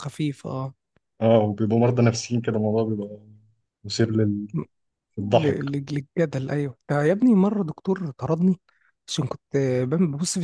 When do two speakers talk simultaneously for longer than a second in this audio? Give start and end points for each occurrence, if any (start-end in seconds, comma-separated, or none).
none